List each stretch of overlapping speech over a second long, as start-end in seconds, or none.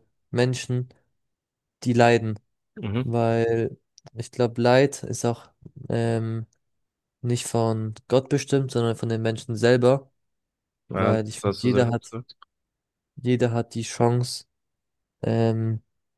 10.9-12.1